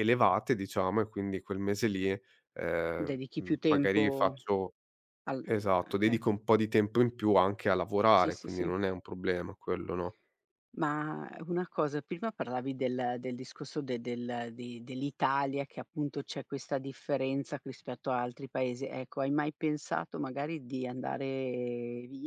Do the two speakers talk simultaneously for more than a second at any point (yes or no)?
yes